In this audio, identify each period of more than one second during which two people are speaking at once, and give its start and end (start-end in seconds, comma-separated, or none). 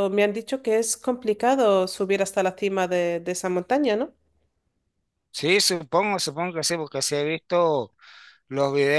none